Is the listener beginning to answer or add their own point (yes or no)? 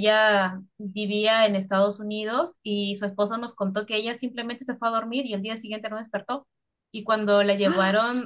no